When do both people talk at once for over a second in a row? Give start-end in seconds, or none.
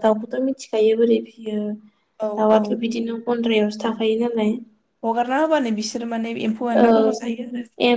none